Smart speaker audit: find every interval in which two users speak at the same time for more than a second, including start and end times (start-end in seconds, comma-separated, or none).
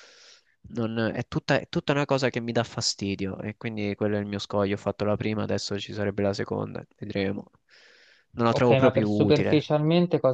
8.5-9.7